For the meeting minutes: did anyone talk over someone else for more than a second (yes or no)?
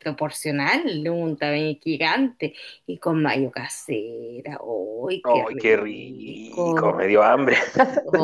yes